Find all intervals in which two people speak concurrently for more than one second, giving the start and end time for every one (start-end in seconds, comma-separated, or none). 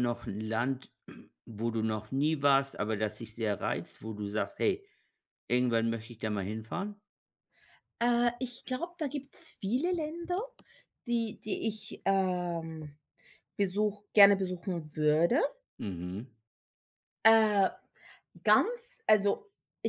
none